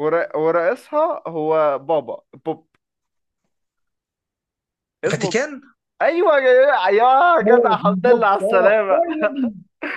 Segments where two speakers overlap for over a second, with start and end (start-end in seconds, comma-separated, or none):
7.5-9.0